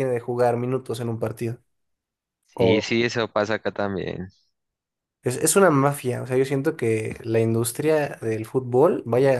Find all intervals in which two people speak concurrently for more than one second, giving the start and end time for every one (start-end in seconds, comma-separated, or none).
none